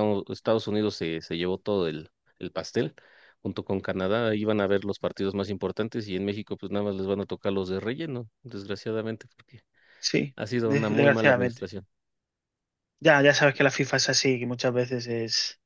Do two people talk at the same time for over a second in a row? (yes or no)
yes